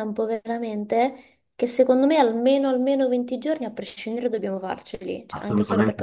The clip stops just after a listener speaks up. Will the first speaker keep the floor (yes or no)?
no